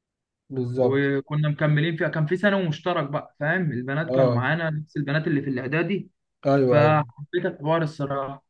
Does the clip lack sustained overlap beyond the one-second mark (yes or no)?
yes